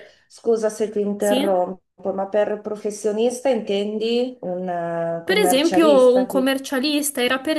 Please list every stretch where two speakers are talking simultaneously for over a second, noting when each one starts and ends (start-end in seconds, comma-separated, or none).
5.2-6.5